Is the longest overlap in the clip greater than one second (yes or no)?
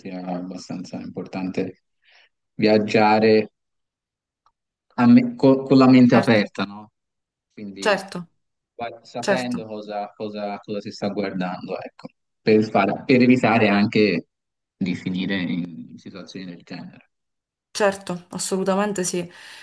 no